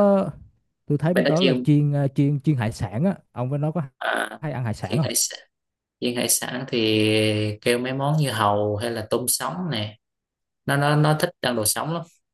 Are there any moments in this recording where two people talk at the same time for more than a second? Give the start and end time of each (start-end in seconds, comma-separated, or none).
none